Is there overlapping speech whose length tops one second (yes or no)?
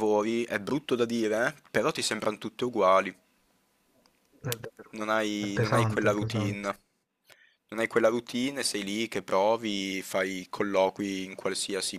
yes